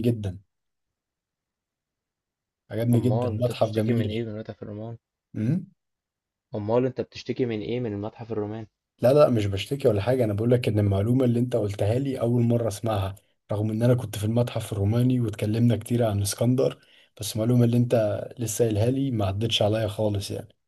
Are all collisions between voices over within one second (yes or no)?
no